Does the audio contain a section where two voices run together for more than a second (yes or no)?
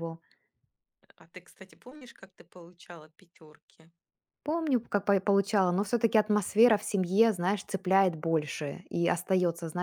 no